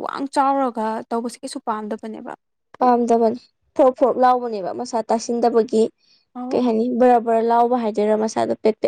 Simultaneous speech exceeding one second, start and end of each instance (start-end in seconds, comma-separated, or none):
none